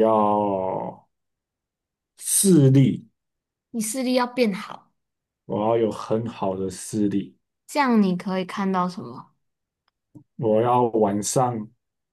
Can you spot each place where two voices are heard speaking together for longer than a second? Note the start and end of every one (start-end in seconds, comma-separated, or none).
none